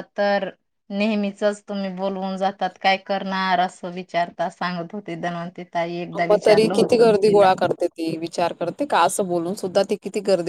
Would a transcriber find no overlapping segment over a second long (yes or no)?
yes